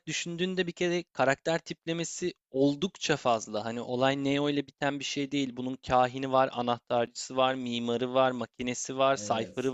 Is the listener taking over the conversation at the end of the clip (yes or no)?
no